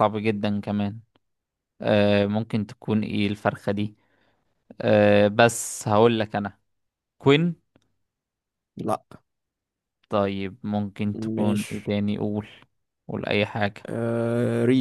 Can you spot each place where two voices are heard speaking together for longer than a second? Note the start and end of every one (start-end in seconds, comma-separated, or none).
none